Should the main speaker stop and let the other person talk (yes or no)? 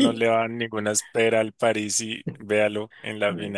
yes